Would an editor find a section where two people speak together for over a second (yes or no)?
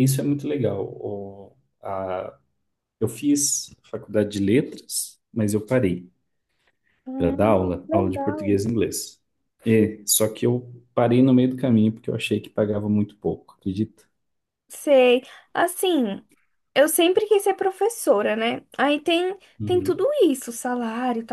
yes